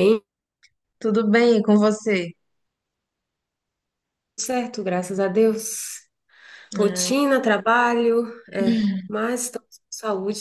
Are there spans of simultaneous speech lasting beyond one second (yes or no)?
no